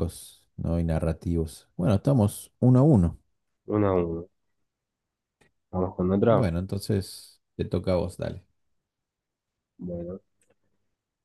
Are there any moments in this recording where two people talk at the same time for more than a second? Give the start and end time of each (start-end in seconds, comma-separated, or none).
none